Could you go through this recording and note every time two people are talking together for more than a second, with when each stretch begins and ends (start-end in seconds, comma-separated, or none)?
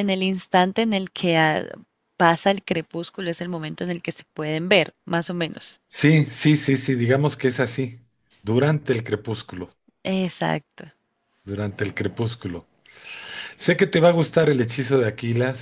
none